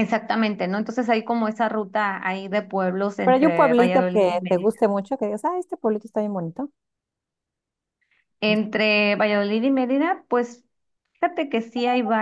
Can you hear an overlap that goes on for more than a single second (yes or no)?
yes